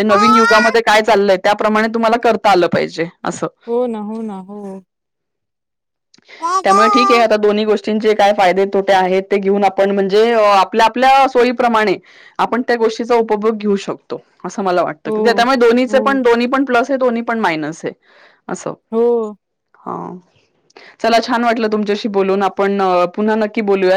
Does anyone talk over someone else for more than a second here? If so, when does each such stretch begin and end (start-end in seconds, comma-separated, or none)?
none